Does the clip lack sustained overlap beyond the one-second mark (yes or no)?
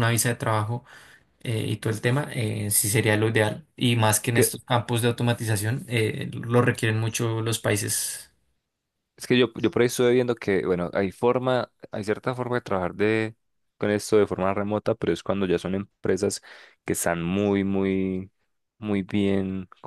yes